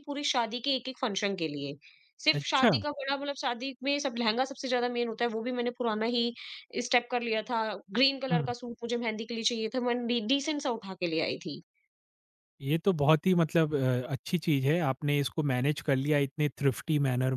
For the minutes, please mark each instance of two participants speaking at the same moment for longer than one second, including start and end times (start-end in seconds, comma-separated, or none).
none